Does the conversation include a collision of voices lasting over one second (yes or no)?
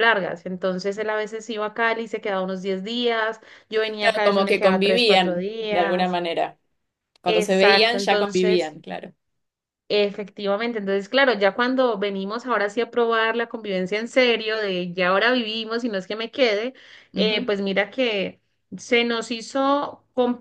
yes